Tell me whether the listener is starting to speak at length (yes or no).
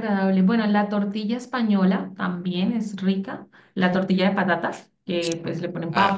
yes